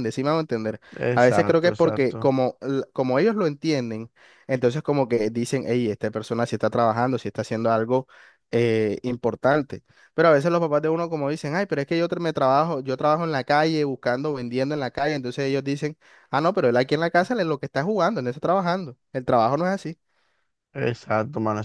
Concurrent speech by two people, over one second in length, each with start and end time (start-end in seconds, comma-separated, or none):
1.1-2.3